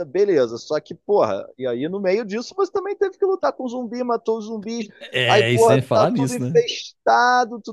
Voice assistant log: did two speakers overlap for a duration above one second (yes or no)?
yes